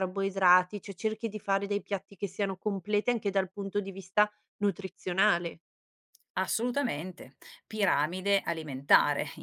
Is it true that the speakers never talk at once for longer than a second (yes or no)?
yes